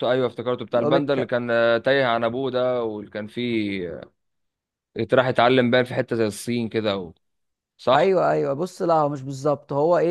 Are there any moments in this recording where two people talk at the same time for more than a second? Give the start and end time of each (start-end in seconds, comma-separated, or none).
none